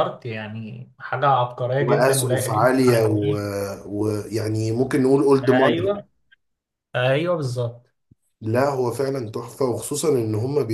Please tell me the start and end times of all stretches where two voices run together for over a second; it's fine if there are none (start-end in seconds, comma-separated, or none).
1.8-3.1